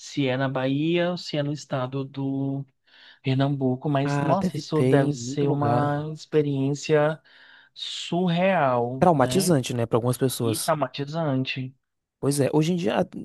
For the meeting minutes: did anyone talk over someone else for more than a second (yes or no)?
yes